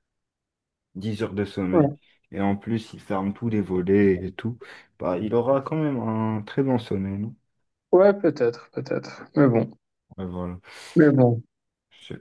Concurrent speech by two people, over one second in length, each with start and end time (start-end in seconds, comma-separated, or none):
none